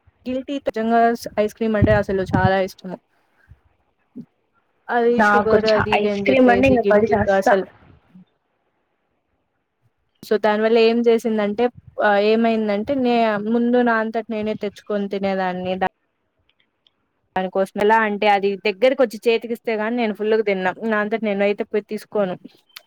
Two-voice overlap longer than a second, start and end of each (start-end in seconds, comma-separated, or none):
5.2-7.5